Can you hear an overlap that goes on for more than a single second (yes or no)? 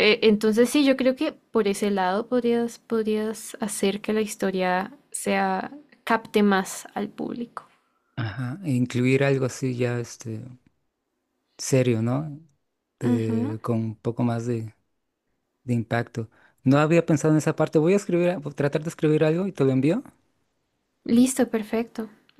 no